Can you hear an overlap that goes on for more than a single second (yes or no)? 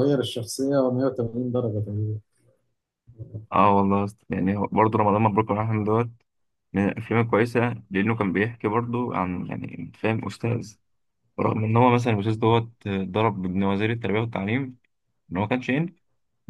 no